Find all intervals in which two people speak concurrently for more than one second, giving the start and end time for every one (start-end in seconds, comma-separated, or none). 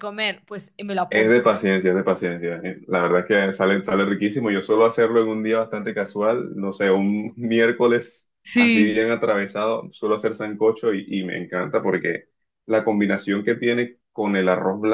none